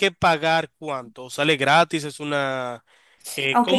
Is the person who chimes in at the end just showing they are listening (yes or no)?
no